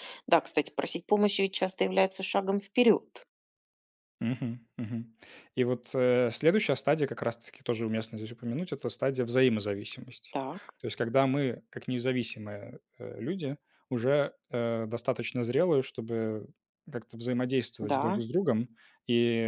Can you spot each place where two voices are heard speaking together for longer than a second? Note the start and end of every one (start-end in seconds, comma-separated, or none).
none